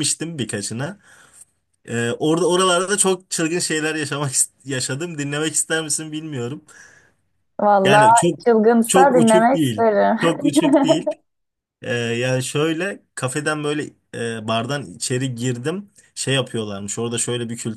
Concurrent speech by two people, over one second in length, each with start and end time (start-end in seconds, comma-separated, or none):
8.8-10.2